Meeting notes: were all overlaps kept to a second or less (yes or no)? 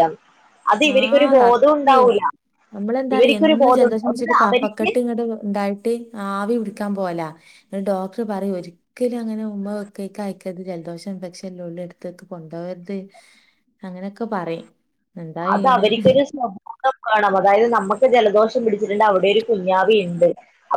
no